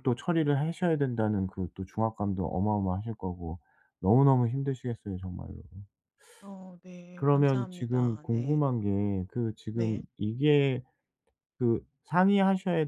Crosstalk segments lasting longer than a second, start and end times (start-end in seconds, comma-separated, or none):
7.2-8.6